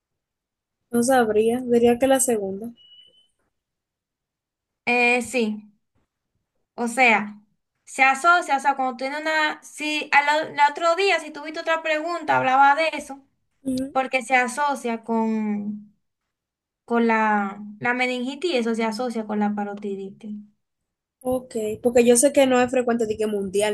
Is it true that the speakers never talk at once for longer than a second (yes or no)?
yes